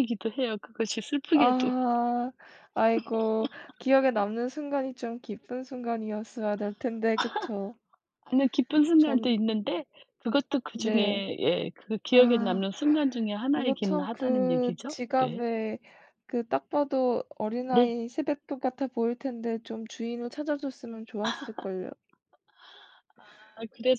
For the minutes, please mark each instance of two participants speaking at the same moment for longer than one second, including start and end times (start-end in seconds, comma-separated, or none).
13.6-15.4